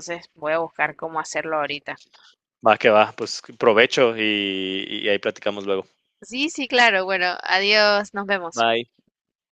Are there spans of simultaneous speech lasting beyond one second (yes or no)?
no